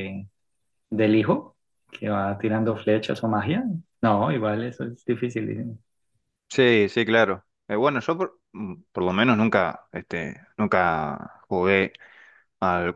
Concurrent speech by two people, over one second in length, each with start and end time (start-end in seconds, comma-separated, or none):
none